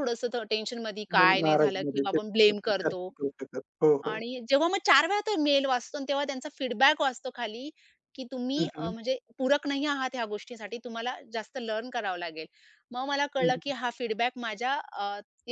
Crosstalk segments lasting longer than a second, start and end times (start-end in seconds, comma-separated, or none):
1.2-3.1